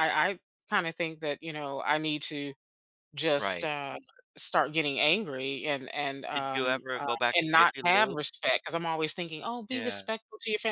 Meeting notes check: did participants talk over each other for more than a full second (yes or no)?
yes